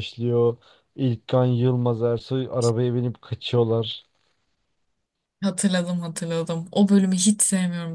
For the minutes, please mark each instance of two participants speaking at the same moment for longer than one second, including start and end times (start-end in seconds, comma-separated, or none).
none